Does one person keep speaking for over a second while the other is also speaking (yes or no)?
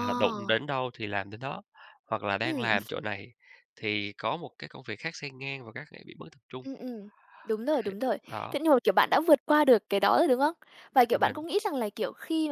no